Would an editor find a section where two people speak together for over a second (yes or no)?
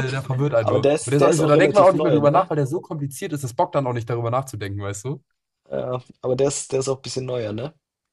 yes